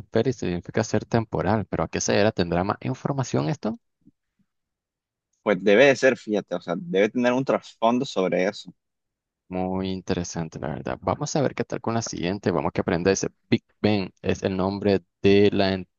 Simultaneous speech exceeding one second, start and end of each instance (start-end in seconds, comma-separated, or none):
none